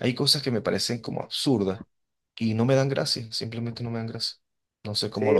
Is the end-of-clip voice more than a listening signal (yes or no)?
yes